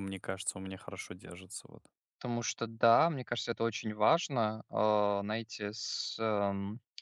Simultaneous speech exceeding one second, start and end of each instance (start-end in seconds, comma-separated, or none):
none